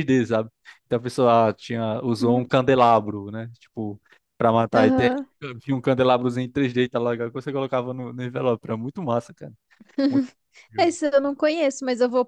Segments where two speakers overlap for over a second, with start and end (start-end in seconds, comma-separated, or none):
none